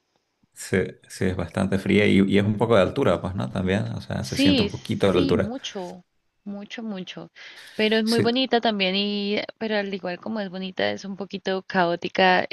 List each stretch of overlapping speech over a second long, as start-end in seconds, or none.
4.2-5.5